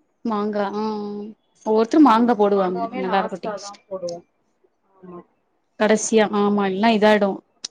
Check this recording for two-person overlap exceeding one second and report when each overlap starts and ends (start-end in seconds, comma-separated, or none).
2.0-3.8